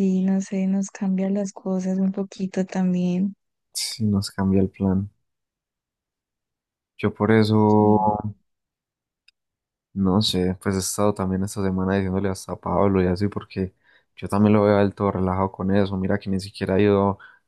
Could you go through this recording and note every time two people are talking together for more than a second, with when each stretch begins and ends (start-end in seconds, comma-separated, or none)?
none